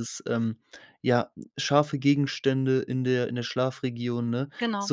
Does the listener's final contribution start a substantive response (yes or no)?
no